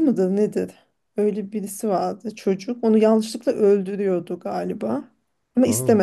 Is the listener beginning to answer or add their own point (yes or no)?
no